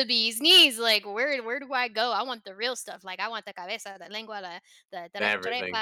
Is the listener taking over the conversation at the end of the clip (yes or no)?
no